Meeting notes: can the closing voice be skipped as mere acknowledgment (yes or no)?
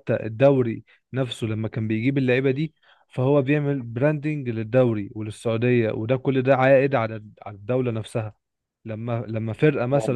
yes